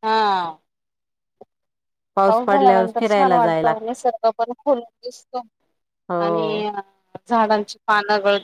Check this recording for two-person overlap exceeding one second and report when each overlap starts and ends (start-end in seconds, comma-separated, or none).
2.5-3.8